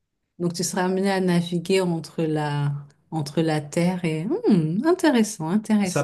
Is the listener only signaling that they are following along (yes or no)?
no